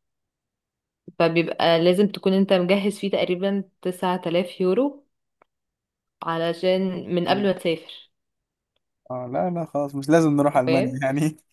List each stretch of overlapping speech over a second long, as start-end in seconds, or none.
none